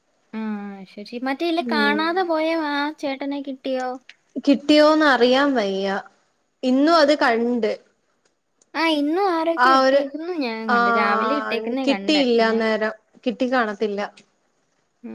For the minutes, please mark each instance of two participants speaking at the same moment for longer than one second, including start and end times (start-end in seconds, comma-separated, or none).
10.8-12.6